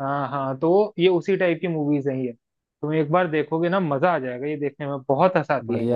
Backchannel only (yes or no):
no